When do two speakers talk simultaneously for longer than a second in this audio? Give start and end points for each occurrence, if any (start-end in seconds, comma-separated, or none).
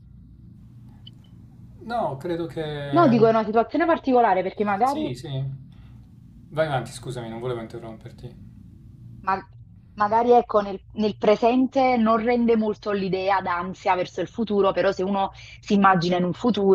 none